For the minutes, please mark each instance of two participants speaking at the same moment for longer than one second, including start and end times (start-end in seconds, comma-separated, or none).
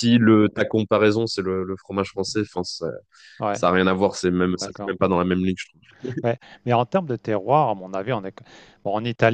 none